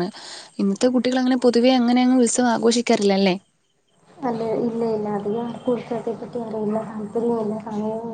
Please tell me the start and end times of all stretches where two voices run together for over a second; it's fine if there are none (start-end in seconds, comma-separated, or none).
none